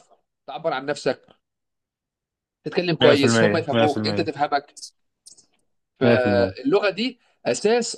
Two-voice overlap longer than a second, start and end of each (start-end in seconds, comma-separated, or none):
3.0-4.3